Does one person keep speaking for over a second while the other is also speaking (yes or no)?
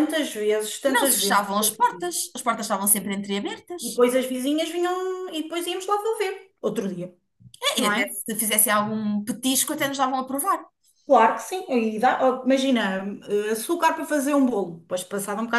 yes